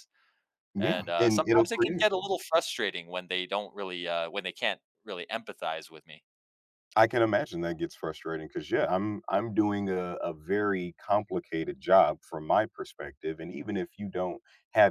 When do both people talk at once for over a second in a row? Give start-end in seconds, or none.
0.8-2.0